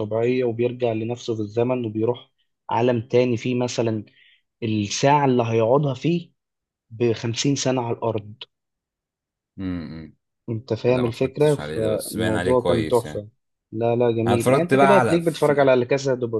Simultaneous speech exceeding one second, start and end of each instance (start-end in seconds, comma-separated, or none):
10.8-13.3, 14.3-15.7